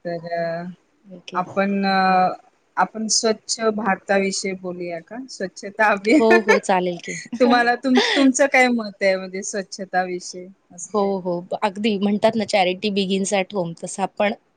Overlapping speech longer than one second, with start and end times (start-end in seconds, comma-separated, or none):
none